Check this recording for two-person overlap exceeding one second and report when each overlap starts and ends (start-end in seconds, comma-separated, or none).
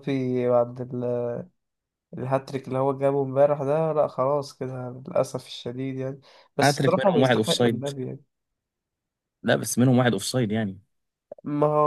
6.6-7.9